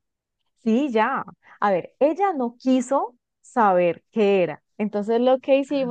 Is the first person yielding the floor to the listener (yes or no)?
no